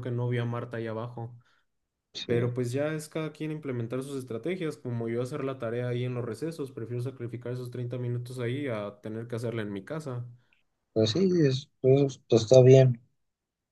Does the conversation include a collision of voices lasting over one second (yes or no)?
no